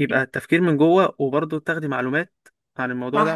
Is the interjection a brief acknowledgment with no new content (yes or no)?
no